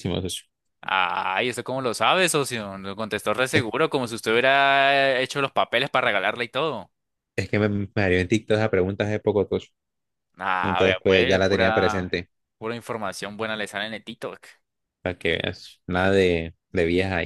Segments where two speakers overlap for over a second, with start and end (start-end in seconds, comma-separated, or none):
10.6-12.2